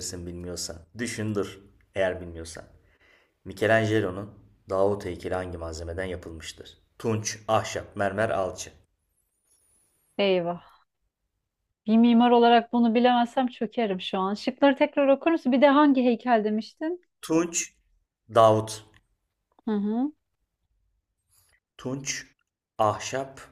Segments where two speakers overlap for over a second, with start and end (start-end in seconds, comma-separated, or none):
none